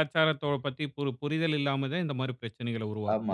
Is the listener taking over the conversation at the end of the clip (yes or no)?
yes